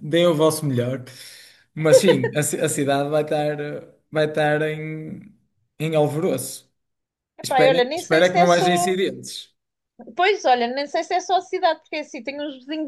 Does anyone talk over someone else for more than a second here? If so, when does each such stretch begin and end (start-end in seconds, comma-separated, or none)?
7.4-8.9